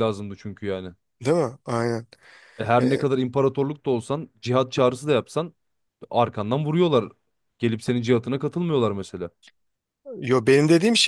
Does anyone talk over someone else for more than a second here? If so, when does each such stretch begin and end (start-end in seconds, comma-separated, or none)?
none